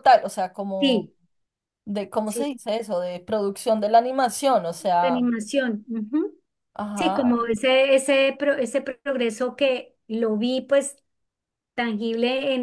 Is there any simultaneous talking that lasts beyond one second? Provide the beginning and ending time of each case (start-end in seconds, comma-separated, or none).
none